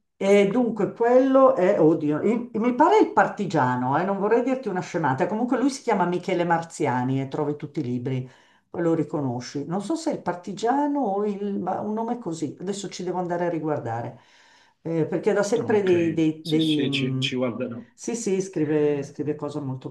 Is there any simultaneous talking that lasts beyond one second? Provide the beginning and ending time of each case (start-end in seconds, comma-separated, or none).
15.6-17.4